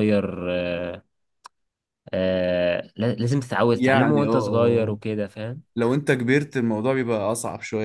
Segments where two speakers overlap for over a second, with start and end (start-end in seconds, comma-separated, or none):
3.7-5.0